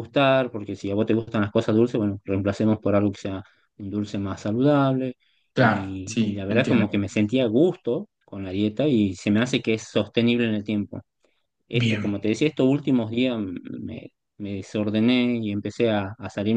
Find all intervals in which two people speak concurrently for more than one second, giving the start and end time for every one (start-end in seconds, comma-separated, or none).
5.5-6.8